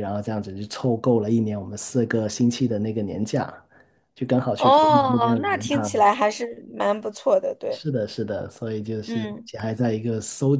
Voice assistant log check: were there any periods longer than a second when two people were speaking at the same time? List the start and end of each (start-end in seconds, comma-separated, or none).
4.5-6.0